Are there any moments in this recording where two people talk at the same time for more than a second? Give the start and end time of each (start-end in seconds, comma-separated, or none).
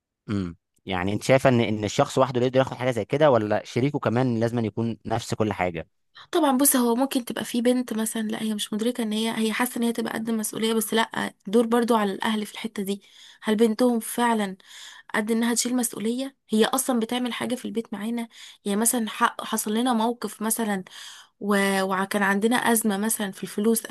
none